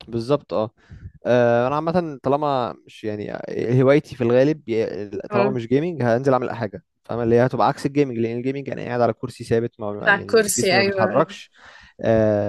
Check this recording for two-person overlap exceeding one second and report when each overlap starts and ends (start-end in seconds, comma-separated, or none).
10.1-11.4